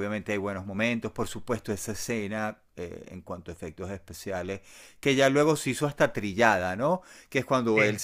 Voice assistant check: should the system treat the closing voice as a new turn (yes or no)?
no